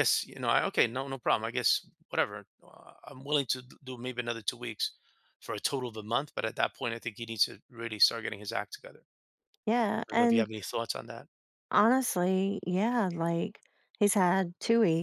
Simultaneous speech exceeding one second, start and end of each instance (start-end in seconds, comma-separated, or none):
none